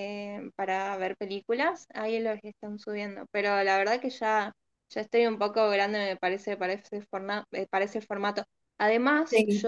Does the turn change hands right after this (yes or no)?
no